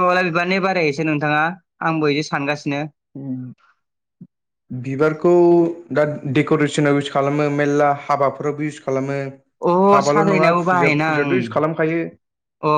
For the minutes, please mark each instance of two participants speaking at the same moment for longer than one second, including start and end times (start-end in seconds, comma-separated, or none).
10.1-11.8